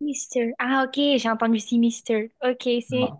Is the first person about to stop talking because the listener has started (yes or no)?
no